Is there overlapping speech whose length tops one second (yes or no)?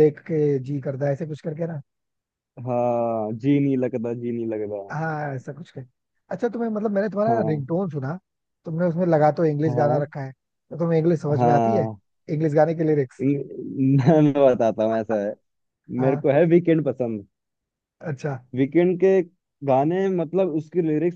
no